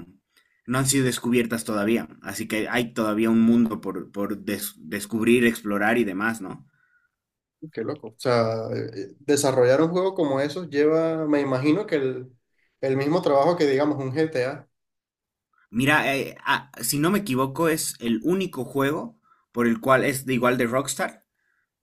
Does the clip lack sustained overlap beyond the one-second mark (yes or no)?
yes